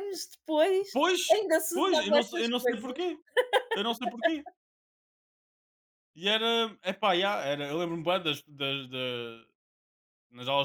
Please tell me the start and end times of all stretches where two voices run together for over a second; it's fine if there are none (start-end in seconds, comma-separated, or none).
1.3-3.0